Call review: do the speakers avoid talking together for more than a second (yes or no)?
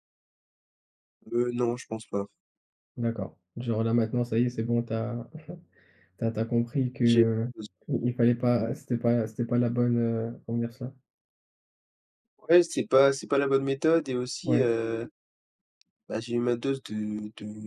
yes